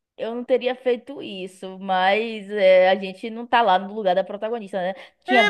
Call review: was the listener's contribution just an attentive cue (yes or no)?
no